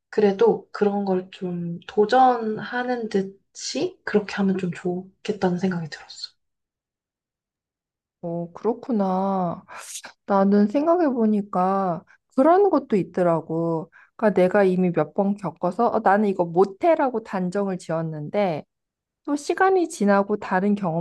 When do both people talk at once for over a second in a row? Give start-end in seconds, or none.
none